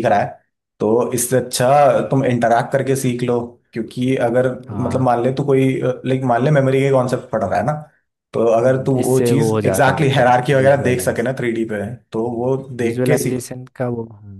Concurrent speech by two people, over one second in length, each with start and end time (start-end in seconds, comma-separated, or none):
8.6-11.3